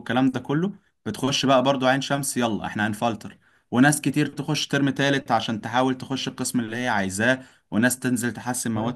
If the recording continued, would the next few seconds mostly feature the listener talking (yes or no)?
no